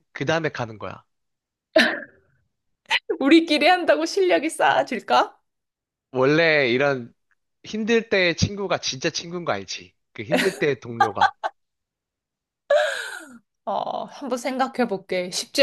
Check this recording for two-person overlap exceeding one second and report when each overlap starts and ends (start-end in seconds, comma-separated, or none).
none